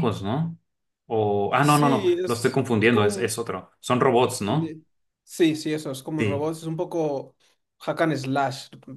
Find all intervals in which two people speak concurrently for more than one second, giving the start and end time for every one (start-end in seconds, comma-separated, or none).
1.6-3.4